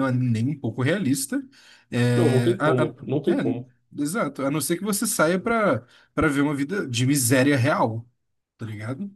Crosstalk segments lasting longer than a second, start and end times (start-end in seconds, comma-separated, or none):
2.1-3.7